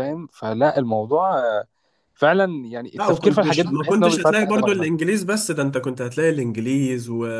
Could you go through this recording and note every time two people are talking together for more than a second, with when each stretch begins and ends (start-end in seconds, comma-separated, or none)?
3.0-4.9